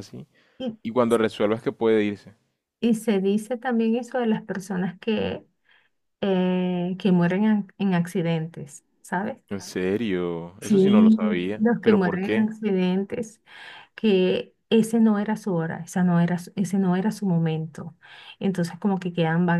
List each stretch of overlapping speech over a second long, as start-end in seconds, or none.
10.6-12.5